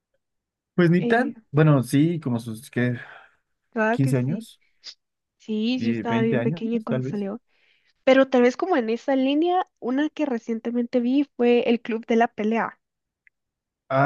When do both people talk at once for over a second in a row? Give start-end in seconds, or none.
5.8-7.2